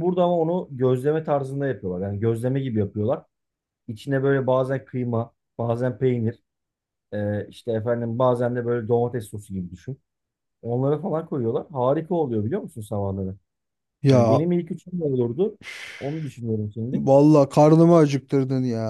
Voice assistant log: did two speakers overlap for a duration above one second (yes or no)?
no